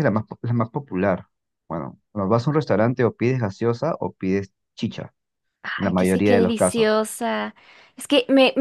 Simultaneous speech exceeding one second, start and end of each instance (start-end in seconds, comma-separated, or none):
5.8-7.0